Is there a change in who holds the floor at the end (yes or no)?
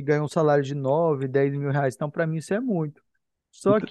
no